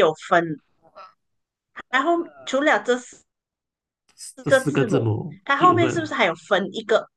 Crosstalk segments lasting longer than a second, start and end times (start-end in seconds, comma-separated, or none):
4.5-6.1